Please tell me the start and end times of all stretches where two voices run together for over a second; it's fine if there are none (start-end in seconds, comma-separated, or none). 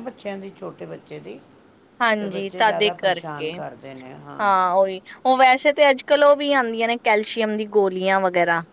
2.2-3.5